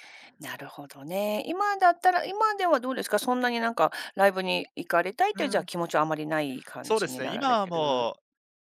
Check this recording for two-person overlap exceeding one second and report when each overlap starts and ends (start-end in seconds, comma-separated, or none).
6.8-8.1